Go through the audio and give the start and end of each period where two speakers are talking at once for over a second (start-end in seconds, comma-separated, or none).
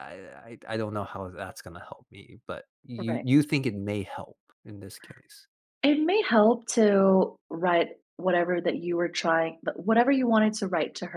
none